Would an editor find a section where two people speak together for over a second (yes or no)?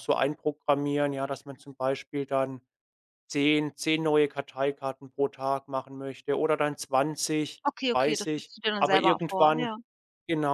yes